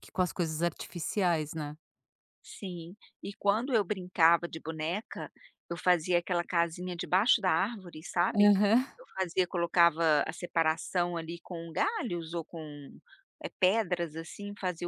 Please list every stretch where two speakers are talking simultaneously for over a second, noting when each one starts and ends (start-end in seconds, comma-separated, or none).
none